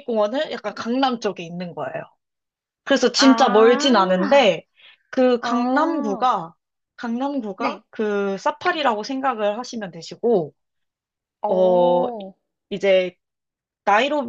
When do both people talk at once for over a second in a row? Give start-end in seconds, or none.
3.2-4.6